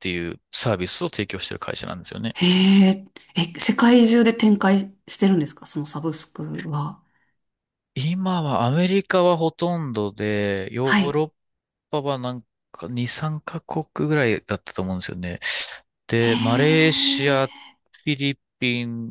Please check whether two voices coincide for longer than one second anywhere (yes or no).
yes